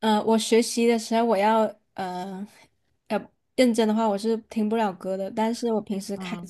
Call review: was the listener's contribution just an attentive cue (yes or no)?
yes